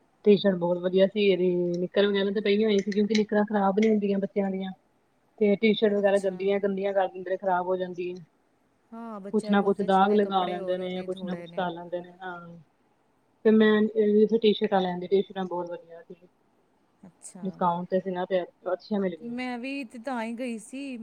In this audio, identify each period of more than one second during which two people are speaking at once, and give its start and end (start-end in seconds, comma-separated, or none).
9.3-11.5